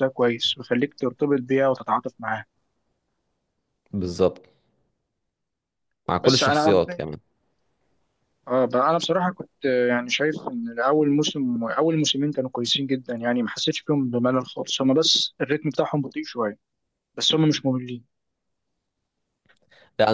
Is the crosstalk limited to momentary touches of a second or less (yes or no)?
yes